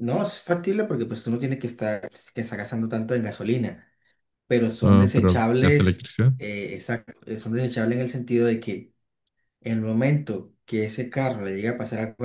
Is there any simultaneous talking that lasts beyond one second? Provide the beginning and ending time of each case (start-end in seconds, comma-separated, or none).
4.8-6.3